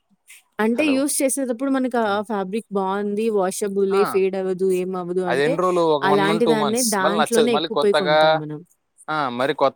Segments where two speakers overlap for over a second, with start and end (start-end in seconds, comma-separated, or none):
6.1-8.2